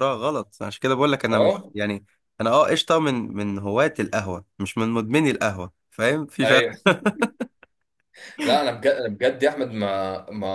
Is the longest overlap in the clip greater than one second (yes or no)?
no